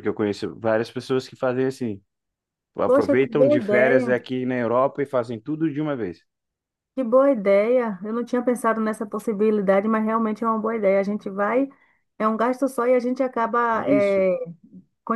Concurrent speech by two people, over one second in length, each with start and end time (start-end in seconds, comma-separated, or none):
2.8-4.1